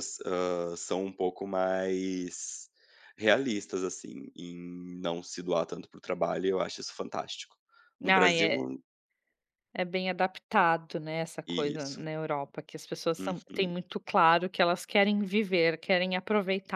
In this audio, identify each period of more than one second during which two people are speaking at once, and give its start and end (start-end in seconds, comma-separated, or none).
none